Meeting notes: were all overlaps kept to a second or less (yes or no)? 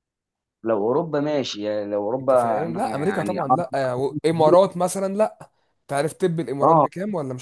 no